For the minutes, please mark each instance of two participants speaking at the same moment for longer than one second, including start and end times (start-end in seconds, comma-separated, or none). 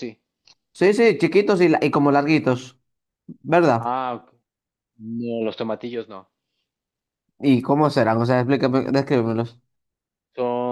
none